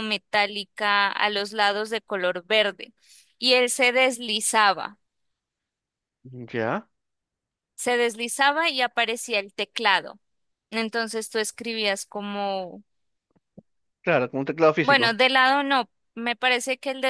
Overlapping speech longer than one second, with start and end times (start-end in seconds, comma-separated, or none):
none